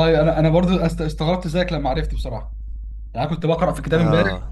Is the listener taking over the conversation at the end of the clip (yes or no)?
no